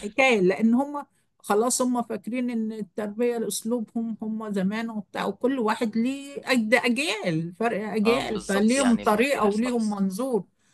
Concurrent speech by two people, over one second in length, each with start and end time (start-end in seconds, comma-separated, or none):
8.1-9.8